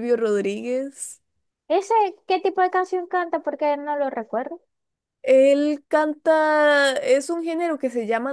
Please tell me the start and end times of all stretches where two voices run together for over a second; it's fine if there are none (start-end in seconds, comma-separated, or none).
none